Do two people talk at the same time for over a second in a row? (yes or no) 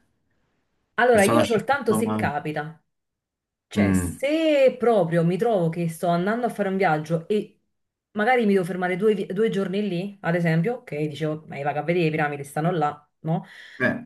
yes